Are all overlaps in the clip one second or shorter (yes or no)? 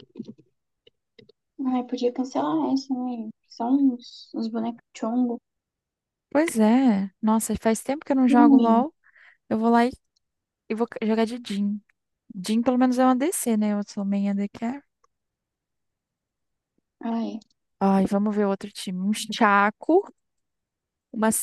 yes